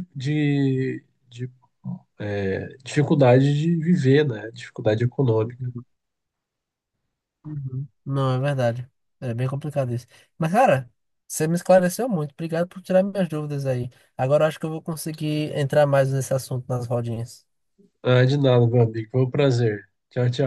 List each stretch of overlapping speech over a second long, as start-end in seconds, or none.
none